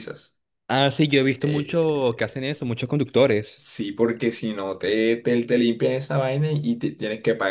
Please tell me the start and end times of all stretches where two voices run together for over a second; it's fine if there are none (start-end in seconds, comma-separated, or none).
1.3-2.5